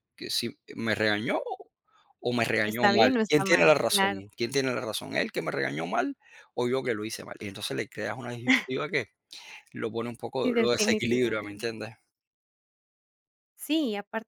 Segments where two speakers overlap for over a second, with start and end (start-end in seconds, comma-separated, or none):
2.6-4.2, 10.4-11.7